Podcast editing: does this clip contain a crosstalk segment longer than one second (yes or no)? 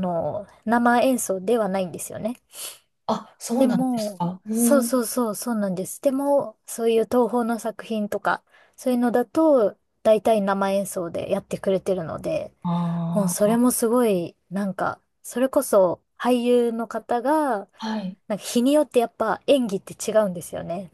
yes